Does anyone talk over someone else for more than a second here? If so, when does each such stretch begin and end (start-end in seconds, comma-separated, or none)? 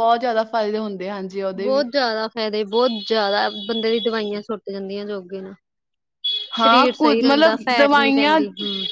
6.6-8.4